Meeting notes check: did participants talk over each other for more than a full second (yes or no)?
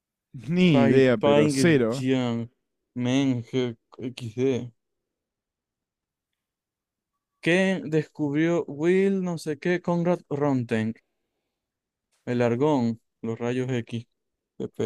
yes